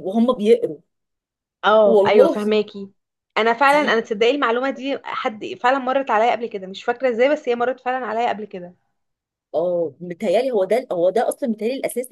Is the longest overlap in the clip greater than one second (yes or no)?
no